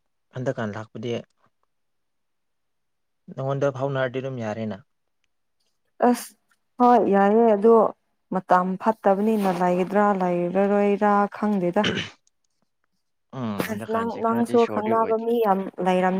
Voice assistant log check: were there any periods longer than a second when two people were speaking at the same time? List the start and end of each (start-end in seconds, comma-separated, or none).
13.7-15.2